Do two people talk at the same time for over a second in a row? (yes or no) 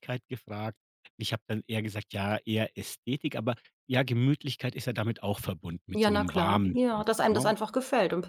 yes